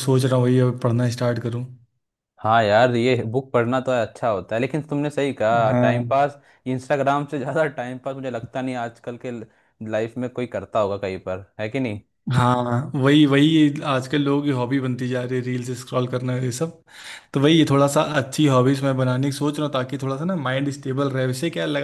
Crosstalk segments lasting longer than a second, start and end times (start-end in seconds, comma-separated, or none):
none